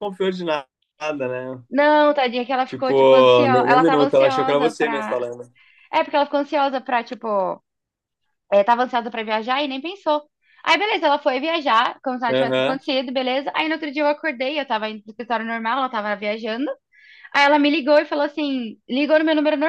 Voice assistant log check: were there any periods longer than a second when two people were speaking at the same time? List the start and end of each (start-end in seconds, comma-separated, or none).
2.7-5.2